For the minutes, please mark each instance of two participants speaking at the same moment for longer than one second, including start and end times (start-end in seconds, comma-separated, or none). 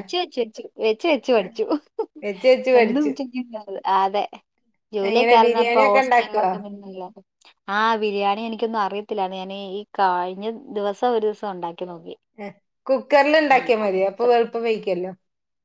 5.1-6.5